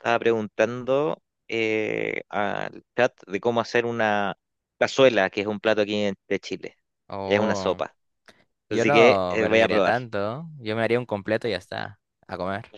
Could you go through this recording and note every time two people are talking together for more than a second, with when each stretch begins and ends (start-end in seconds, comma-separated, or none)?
8.7-9.9